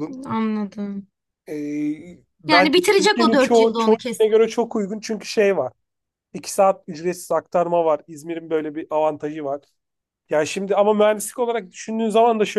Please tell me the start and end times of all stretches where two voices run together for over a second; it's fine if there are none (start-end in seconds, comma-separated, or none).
2.5-4.3